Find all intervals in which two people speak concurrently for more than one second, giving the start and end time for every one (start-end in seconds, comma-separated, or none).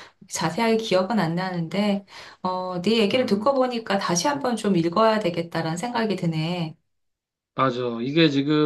none